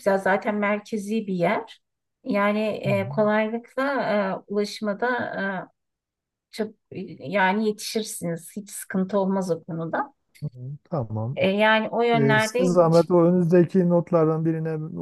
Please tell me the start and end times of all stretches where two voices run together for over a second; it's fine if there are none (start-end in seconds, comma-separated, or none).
none